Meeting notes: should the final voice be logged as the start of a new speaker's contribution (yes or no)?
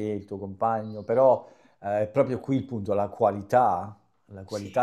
no